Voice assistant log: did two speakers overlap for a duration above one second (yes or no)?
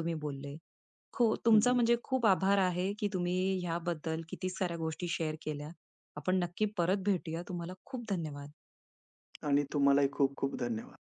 no